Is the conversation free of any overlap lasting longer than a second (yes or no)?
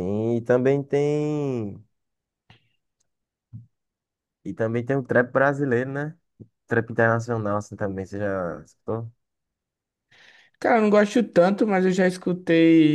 yes